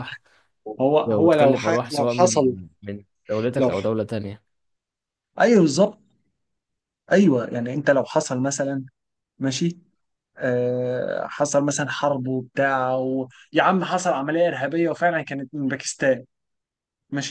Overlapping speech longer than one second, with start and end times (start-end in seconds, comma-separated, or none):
1.1-2.5